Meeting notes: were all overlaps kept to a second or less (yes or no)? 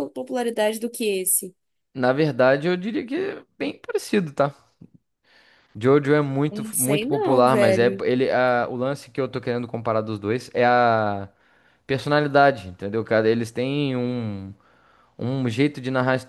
no